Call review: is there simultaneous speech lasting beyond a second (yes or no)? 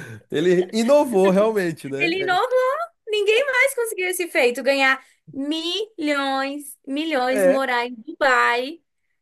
no